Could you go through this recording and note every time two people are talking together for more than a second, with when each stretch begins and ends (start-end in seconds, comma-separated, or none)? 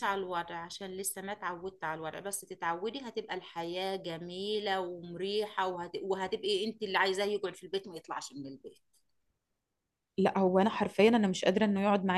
none